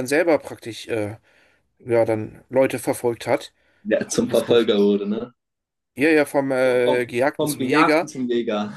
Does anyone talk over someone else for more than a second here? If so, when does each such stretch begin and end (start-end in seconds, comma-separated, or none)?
6.8-8.1